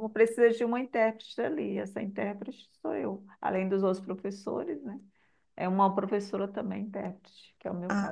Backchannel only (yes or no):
no